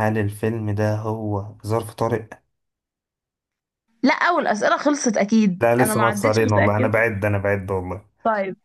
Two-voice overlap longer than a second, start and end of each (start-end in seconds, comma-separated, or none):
5.6-7.0